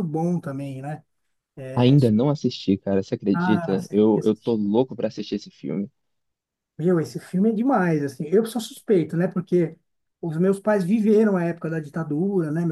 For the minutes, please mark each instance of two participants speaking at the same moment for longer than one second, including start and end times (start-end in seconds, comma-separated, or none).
3.3-4.5